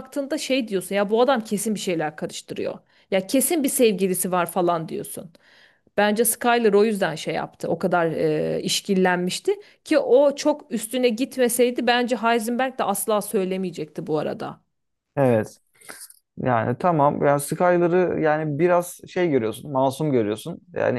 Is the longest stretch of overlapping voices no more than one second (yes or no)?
yes